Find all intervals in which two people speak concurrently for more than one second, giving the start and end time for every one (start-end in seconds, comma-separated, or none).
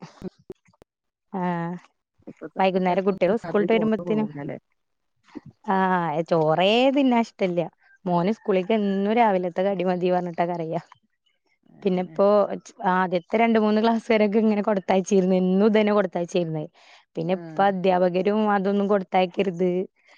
2.6-4.3